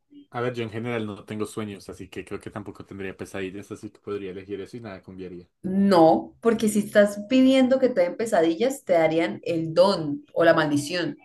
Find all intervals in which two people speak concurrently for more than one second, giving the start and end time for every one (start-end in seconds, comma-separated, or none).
none